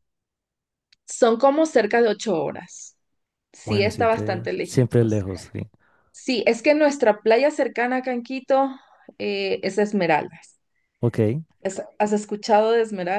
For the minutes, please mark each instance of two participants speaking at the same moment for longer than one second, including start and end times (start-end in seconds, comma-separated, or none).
3.6-5.2